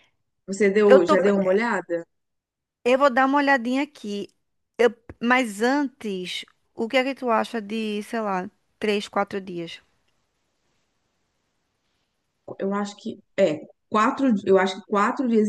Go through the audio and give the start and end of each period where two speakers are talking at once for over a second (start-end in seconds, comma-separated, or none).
none